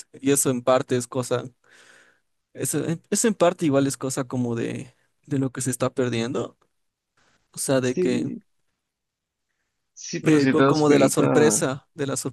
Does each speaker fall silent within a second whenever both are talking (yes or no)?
no